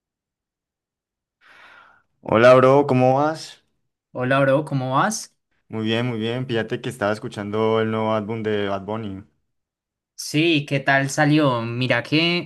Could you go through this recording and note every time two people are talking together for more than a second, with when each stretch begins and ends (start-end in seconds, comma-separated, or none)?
none